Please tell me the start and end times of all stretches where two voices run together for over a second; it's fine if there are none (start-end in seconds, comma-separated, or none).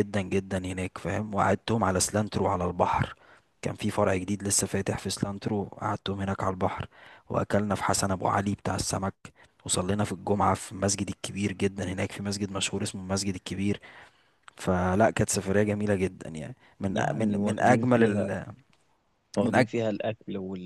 16.9-18.3